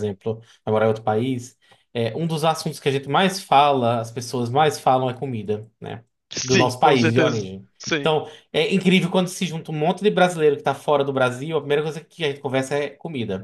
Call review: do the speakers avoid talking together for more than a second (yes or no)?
no